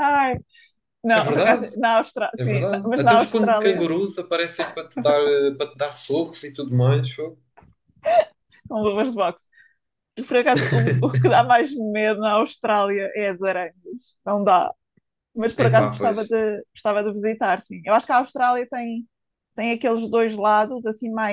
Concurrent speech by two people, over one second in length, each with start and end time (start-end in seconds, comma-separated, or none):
2.4-3.8